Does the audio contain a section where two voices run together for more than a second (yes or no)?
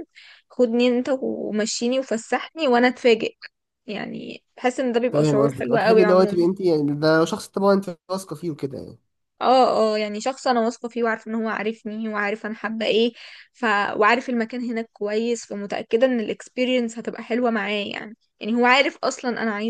yes